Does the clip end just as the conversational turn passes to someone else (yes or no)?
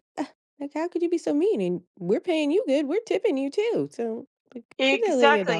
yes